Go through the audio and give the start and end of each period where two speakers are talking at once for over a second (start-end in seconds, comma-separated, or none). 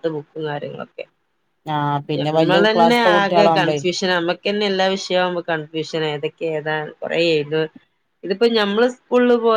2.2-3.8